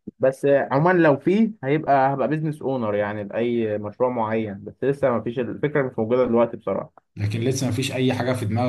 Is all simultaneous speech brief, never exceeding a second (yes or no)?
yes